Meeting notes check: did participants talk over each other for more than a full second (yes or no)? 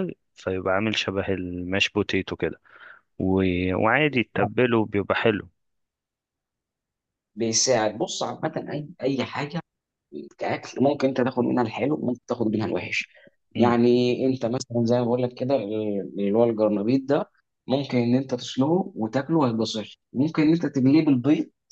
no